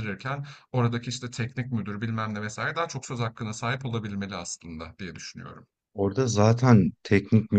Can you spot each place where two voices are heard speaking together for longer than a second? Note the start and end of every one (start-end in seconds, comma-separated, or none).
none